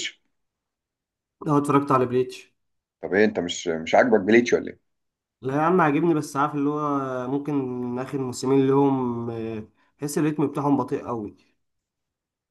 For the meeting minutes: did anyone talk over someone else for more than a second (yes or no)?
no